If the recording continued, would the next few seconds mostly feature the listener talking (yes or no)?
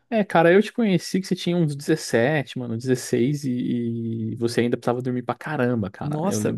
yes